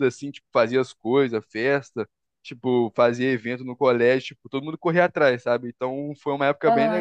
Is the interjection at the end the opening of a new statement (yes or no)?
no